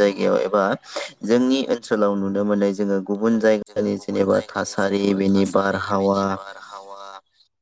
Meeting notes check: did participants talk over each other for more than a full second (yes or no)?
yes